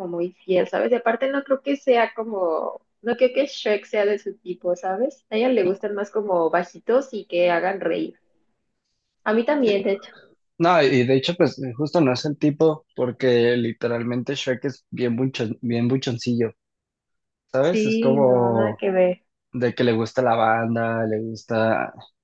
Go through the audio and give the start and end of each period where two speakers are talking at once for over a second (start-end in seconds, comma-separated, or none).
17.6-18.8